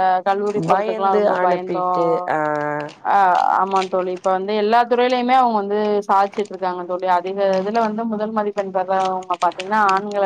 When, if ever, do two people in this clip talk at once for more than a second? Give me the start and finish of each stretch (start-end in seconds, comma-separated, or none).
0.7-2.0